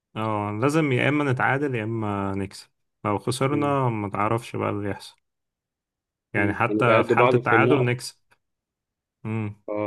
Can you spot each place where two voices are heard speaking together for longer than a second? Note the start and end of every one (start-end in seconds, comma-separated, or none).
6.4-8.0